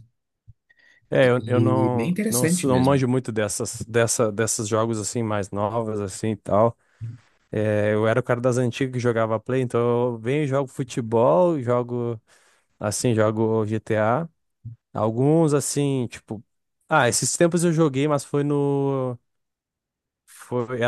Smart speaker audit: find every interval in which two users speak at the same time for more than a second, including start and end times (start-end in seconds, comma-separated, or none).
1.2-3.0